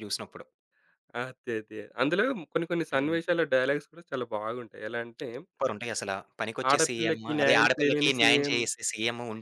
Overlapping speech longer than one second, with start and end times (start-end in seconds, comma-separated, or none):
6.7-8.6